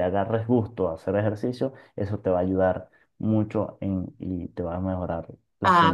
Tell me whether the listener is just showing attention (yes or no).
no